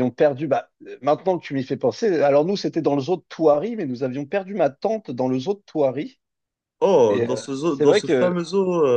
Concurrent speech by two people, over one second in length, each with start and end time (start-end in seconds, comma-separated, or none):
7.1-8.3